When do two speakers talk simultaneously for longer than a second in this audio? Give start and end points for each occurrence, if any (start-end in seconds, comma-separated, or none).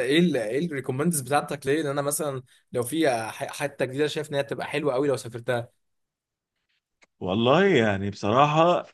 none